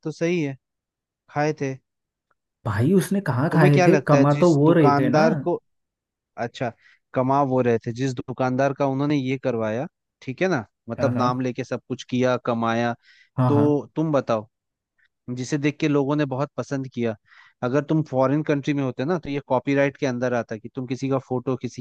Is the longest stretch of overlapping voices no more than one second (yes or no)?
no